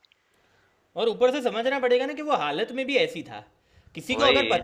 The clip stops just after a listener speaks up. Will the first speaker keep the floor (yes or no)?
yes